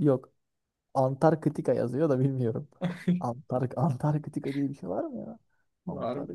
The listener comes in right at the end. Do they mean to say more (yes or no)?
yes